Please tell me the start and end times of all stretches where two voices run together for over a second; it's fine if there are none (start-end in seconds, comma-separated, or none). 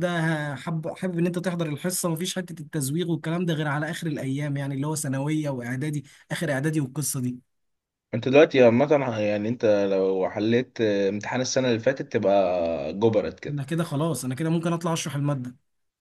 none